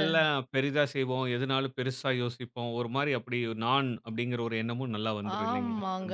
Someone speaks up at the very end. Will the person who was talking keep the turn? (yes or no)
no